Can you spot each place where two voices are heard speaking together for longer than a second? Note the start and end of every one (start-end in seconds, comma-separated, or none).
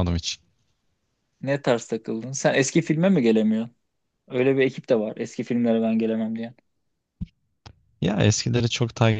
none